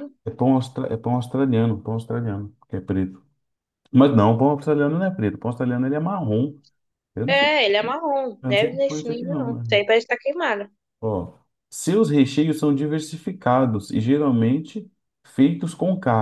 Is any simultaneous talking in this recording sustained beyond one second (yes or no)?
yes